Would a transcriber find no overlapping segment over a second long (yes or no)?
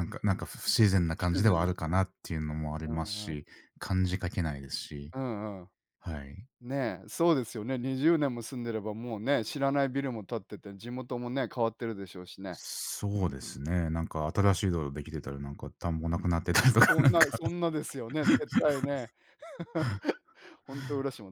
yes